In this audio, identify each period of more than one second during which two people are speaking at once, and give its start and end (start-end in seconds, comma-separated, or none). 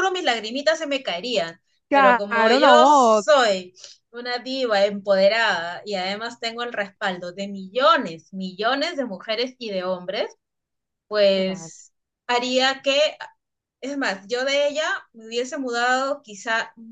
1.9-3.2